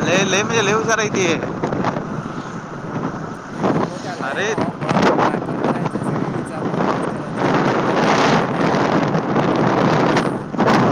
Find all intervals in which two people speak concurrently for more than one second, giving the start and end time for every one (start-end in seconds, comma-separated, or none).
none